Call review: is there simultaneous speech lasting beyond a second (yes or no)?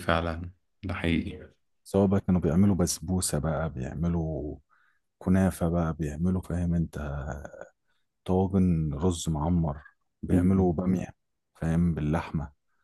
no